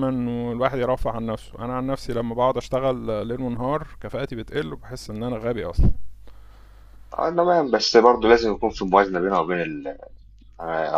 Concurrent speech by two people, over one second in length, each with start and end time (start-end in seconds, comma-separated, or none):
none